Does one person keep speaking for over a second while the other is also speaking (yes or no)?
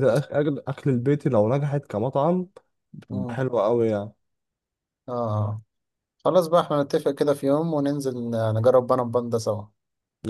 no